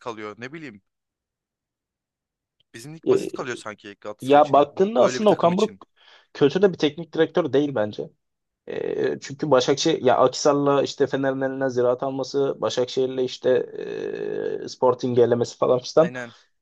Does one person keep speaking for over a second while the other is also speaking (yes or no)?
yes